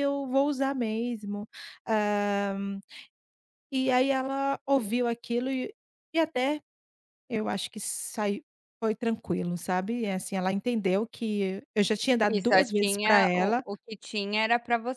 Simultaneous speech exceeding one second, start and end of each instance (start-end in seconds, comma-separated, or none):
12.3-13.6